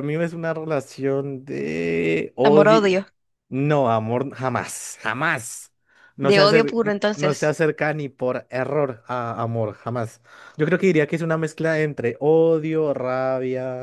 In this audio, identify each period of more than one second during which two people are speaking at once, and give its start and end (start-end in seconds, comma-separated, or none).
6.2-7.5